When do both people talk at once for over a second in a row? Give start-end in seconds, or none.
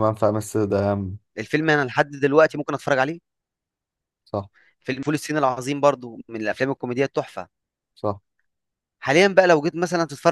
none